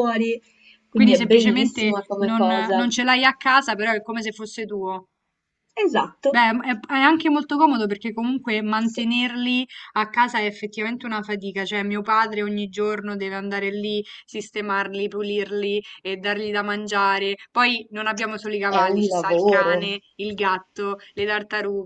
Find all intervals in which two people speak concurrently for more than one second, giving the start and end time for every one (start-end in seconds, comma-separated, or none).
0.9-2.9, 18.7-20.0